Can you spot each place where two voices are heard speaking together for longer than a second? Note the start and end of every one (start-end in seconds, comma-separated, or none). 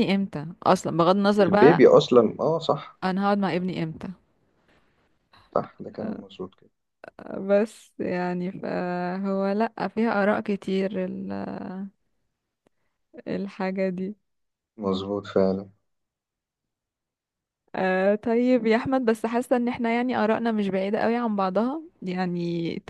none